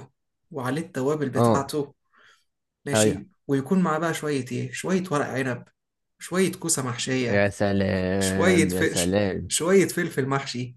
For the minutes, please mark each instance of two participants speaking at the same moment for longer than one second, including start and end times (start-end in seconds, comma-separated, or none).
8.2-9.6